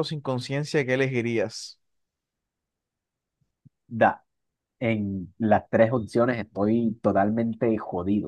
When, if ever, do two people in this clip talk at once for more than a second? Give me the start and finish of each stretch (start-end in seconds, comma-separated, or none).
none